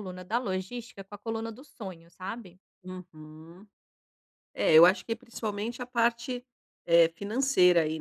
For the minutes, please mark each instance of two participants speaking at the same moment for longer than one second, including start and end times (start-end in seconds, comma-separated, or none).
none